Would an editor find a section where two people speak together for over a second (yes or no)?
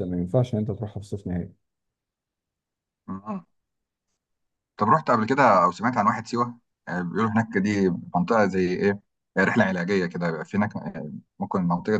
no